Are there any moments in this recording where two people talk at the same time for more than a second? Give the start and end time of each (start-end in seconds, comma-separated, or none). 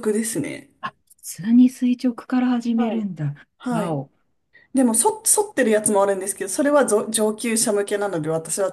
none